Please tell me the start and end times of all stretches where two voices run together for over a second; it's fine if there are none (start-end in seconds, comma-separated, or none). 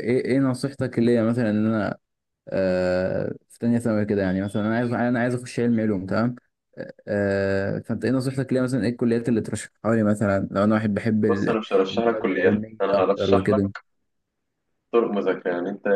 11.3-13.7